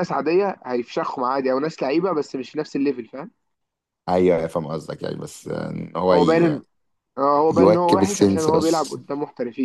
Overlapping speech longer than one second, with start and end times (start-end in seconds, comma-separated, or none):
7.5-9.0